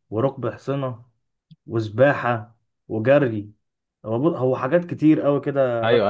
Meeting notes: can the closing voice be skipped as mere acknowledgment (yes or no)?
no